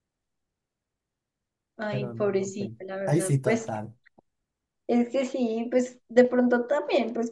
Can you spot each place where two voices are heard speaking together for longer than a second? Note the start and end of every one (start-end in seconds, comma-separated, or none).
1.9-3.7